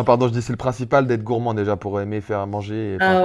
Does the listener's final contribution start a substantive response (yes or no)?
yes